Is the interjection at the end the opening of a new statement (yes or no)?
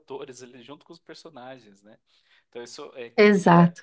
no